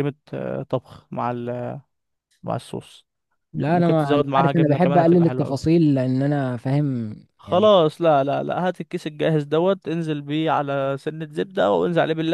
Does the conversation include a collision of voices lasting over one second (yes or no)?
yes